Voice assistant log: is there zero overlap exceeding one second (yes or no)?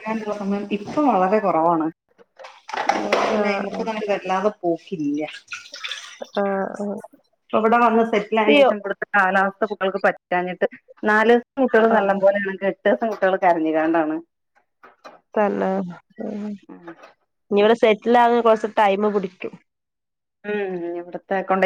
yes